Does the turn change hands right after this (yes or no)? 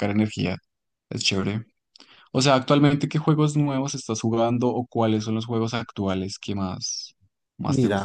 yes